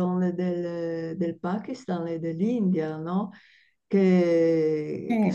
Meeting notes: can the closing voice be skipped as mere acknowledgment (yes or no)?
yes